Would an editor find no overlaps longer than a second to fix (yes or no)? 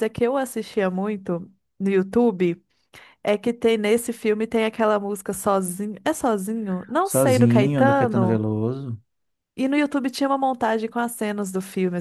no